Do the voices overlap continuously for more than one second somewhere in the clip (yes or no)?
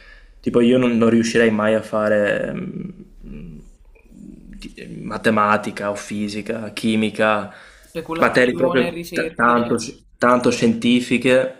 yes